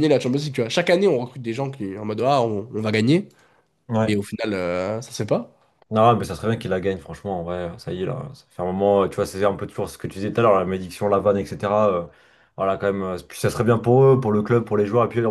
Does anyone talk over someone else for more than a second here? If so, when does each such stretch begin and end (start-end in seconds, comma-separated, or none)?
none